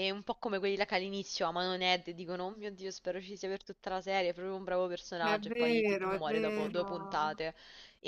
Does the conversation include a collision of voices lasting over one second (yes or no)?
yes